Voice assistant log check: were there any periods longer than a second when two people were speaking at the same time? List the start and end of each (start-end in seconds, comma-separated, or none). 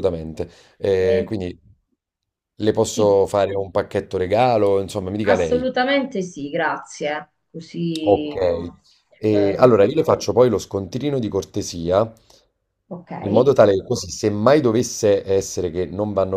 none